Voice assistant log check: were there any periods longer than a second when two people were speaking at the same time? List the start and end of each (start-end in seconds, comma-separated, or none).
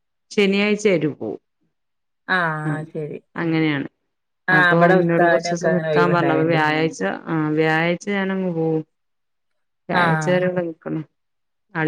4.6-6.6